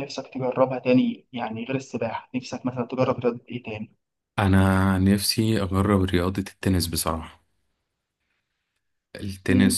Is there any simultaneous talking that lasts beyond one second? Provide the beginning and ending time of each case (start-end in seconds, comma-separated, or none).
none